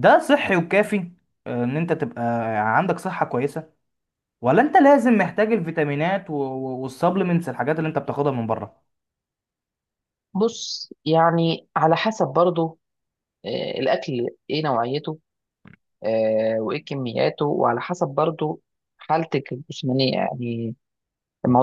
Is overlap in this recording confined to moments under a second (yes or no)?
yes